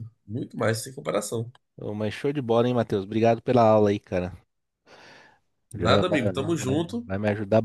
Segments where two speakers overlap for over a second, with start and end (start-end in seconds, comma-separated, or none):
5.7-7.1